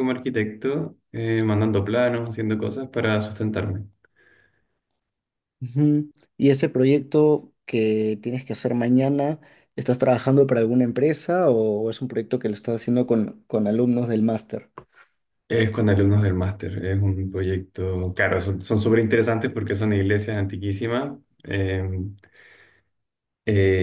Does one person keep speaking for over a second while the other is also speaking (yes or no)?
no